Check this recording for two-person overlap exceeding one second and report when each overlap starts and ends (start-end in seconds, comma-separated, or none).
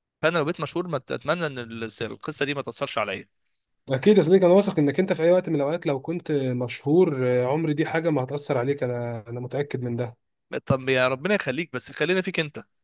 none